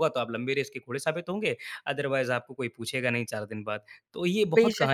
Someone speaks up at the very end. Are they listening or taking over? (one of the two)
taking over